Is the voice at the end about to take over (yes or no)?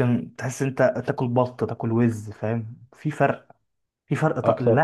no